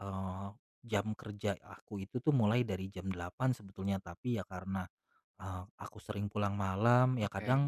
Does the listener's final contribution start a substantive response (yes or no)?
no